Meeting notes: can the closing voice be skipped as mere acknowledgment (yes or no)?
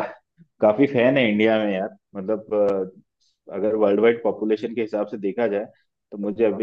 yes